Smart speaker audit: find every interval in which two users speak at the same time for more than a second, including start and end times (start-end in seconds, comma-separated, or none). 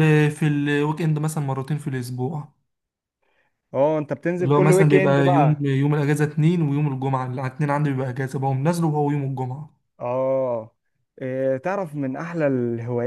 4.4-5.7